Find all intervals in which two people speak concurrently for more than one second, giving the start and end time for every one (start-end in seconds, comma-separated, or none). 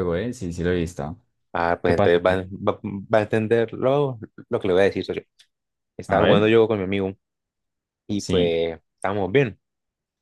none